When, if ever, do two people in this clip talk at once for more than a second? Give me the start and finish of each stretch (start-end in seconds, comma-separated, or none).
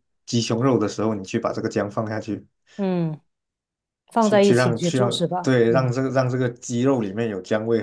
4.2-5.9